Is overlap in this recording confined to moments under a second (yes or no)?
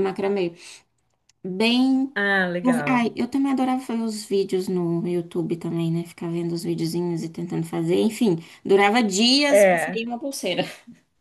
yes